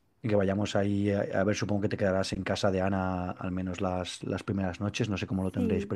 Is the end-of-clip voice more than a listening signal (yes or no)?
yes